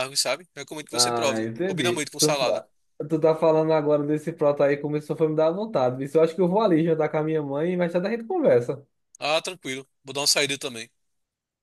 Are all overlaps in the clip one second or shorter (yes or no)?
no